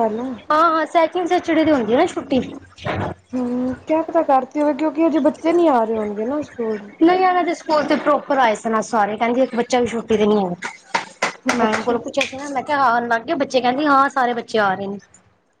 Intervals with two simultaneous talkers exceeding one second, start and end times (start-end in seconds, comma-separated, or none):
none